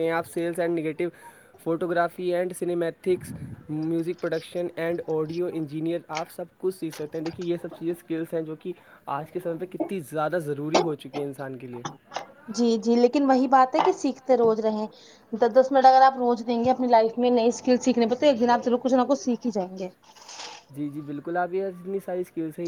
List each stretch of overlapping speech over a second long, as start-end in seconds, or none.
none